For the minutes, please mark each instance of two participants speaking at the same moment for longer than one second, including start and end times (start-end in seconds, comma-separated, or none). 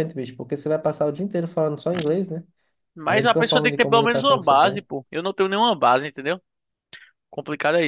3.1-4.8